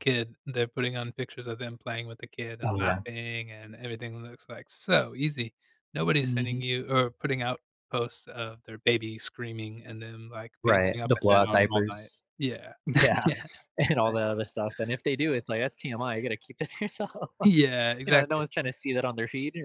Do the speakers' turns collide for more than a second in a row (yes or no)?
yes